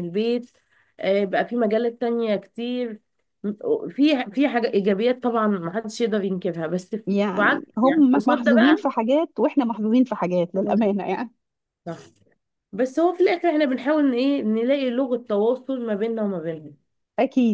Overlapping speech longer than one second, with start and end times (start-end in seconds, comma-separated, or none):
7.4-8.8